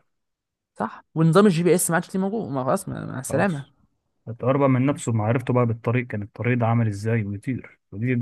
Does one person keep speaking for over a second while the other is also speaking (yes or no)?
no